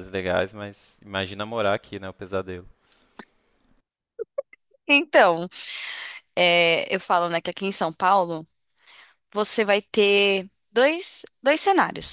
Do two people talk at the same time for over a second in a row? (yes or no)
no